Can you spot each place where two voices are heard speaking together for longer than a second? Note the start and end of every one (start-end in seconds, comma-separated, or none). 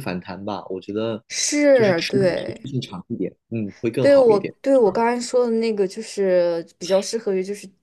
none